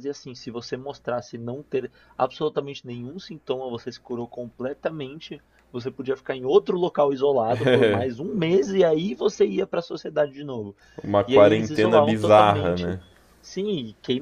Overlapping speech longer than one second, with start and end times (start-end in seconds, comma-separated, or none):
11.3-13.0